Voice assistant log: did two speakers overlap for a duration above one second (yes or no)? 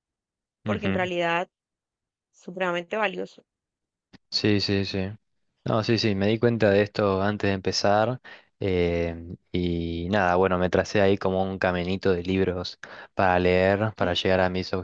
no